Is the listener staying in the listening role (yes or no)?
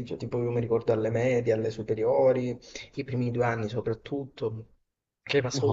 yes